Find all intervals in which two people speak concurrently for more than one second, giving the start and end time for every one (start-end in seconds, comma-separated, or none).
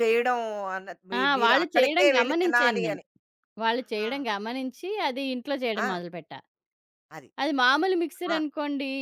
1.2-3.0